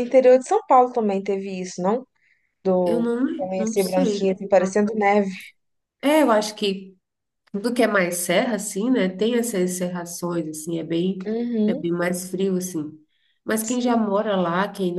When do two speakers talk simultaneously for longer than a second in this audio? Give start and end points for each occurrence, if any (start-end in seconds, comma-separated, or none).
2.9-4.8